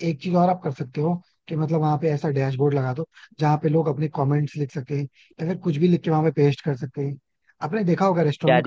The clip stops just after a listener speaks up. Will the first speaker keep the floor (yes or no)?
no